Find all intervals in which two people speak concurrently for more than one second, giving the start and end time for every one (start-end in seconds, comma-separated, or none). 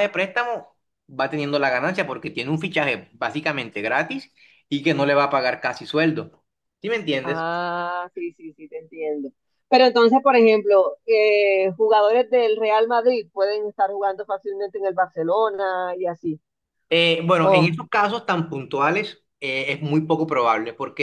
none